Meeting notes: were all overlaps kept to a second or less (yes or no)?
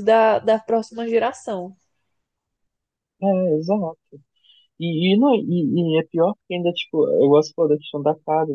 yes